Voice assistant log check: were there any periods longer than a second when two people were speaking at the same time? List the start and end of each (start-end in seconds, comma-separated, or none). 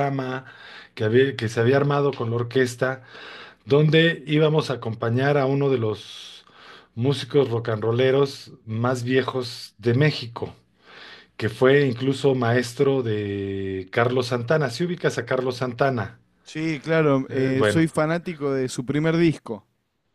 none